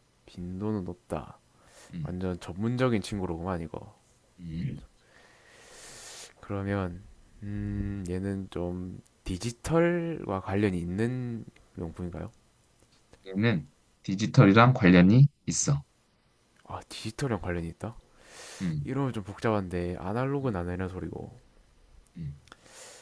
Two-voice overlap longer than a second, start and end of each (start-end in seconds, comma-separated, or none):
none